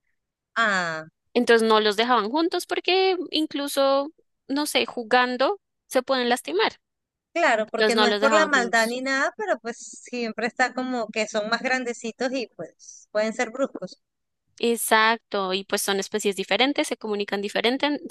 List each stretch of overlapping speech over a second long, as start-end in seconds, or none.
7.7-9.0